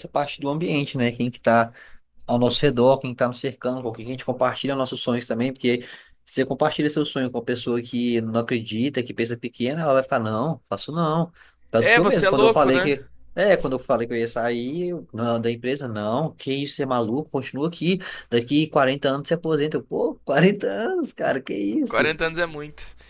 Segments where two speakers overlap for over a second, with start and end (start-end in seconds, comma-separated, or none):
11.8-12.9